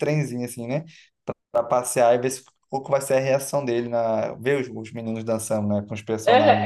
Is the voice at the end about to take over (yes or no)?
yes